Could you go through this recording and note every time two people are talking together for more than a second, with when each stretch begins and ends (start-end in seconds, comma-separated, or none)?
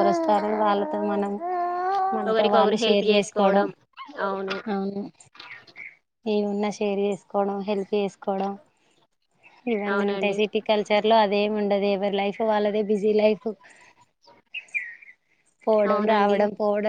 2.3-3.7